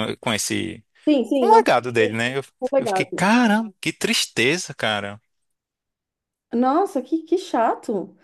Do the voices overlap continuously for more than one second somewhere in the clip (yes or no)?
no